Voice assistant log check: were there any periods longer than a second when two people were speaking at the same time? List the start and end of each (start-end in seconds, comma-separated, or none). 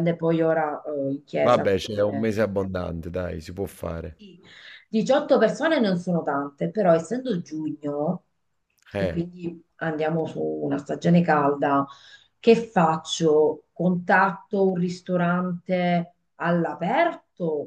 none